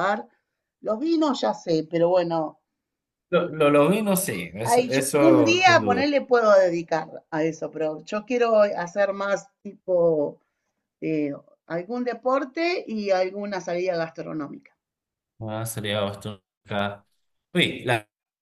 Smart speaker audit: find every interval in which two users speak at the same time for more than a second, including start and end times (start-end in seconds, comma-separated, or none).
4.6-6.1